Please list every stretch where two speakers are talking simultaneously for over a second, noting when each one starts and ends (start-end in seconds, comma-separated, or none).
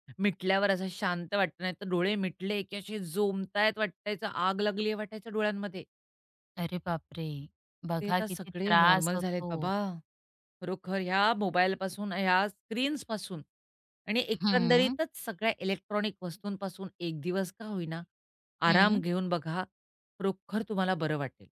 8.0-9.7